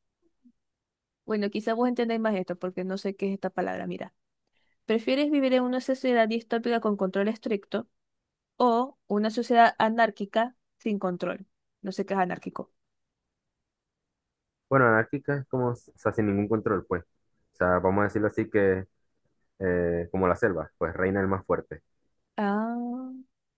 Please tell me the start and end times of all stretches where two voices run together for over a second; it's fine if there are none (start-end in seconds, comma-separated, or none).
none